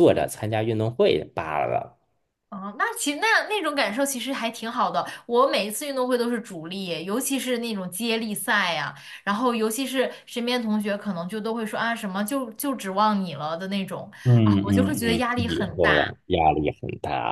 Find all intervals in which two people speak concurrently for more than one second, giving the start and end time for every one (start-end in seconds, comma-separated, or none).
14.4-16.1